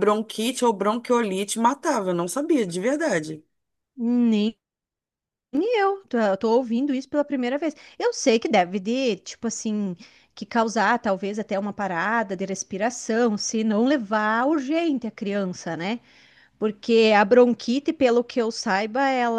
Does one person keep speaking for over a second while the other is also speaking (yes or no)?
no